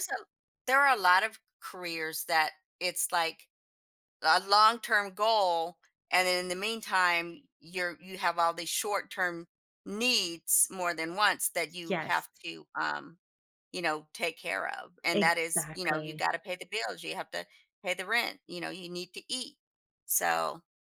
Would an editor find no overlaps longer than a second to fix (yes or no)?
no